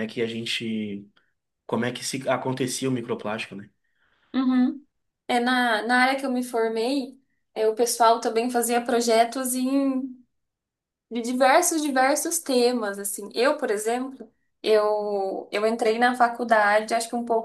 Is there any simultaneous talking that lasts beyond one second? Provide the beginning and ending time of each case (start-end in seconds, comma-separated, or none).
none